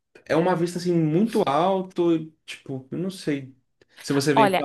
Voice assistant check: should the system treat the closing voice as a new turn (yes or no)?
yes